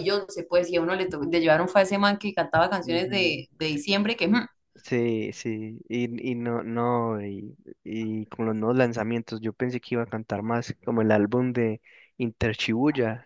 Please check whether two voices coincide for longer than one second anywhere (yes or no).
no